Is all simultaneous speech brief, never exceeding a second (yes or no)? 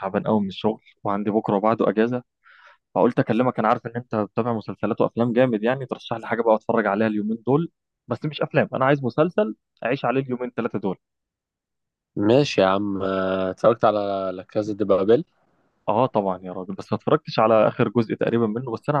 yes